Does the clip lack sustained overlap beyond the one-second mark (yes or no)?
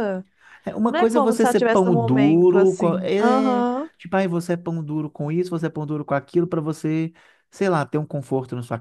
no